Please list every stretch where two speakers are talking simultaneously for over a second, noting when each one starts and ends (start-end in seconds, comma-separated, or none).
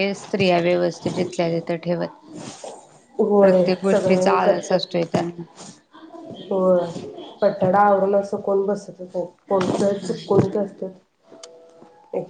3.4-5.1